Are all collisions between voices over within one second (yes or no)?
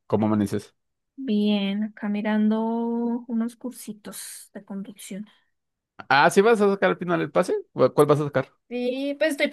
yes